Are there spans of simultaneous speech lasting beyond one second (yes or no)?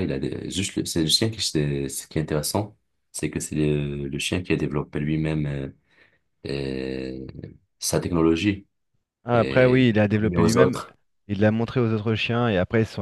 yes